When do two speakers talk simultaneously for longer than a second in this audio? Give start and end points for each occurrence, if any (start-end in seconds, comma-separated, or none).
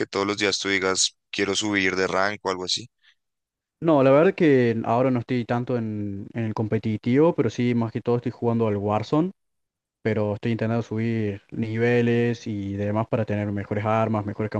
none